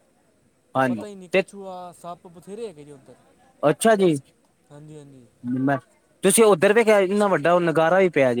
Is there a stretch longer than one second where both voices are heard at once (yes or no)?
no